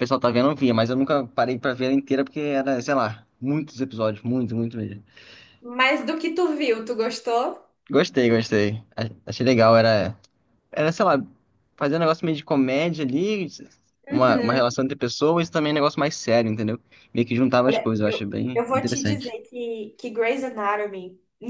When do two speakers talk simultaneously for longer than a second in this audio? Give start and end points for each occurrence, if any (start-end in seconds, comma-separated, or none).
17.6-19.4